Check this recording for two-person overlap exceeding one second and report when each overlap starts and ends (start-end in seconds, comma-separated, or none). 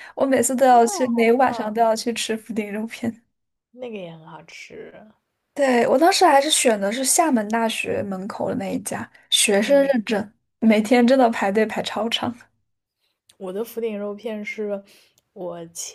0.6-1.9